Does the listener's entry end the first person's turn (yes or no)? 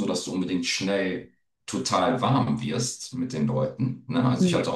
no